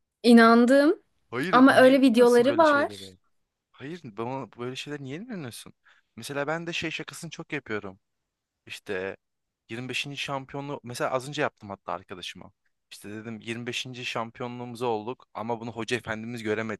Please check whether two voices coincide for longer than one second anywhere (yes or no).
yes